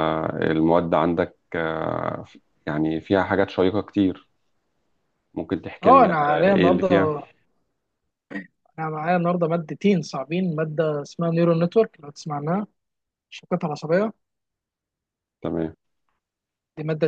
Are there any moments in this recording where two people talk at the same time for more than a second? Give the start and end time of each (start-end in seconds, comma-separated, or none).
5.8-7.1